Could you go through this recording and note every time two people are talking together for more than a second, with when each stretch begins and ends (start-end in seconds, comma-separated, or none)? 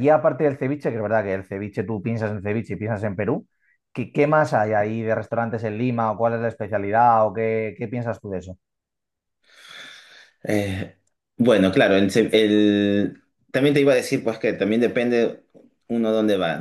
none